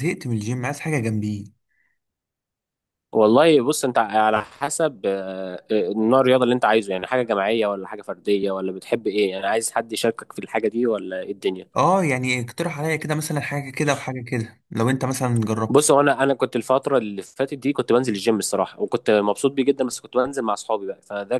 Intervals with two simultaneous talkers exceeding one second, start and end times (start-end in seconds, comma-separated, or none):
none